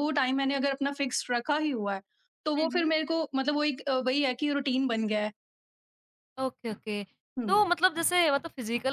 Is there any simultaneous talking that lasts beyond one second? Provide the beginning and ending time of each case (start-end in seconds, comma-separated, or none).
none